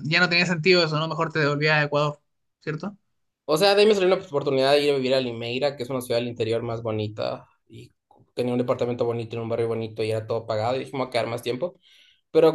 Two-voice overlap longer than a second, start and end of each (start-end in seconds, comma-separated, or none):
none